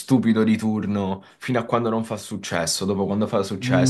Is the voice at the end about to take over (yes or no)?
yes